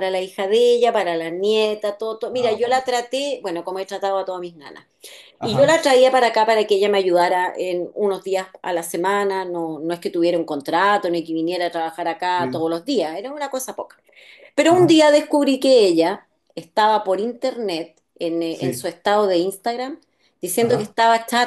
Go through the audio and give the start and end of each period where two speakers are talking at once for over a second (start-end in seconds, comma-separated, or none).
none